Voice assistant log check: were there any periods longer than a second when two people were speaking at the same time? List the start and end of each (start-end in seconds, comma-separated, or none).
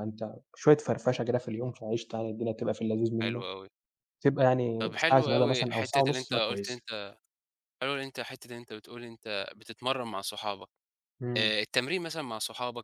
4.8-6.9